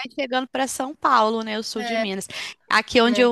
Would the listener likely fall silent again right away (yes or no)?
yes